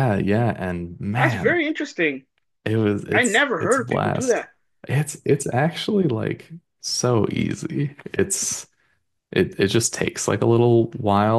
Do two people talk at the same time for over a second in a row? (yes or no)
yes